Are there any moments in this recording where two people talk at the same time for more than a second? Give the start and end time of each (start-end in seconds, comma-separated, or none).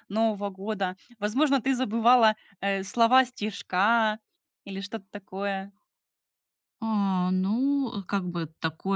none